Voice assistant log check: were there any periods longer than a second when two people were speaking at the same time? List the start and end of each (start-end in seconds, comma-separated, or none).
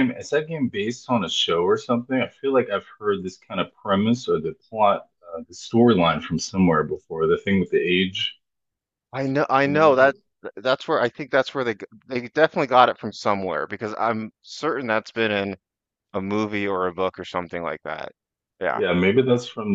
none